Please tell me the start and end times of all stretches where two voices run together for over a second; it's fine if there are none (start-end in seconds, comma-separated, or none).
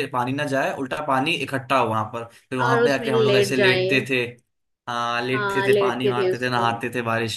2.6-3.9, 5.3-6.6